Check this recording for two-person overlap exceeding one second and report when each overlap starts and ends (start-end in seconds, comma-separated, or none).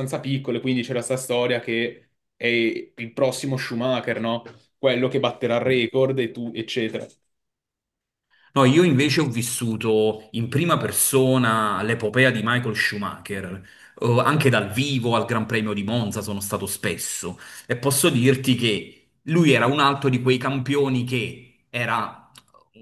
none